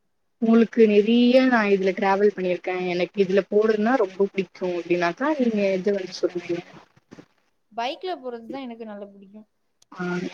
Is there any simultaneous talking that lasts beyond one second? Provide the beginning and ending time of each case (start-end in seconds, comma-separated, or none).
none